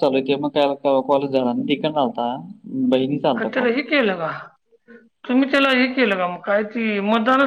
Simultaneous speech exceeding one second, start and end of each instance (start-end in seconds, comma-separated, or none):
none